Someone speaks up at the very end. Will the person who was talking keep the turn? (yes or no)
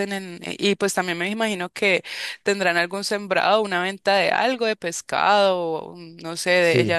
yes